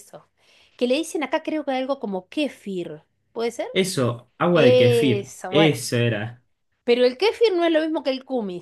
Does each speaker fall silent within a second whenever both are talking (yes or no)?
no